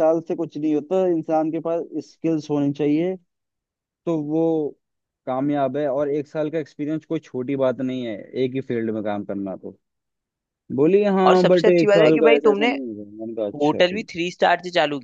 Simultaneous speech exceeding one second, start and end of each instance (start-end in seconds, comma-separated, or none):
11.3-12.7